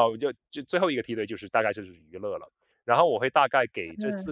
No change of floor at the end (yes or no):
yes